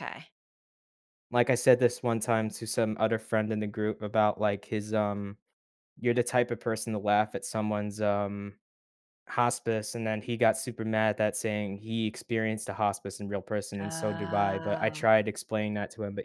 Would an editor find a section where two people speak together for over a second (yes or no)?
yes